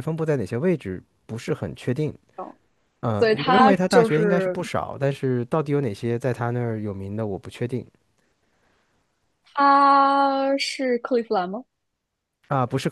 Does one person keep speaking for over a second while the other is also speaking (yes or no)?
yes